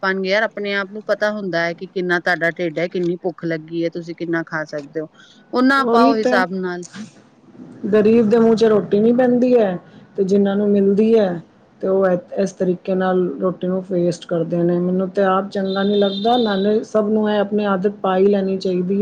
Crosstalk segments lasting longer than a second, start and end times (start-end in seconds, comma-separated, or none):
none